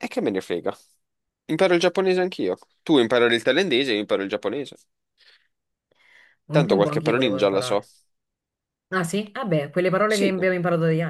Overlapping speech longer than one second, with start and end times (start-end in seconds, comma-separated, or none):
6.5-7.8